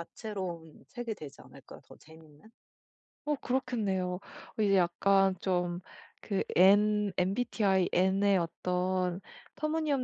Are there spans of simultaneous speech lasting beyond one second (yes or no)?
no